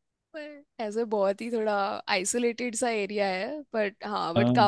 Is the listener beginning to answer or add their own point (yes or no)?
no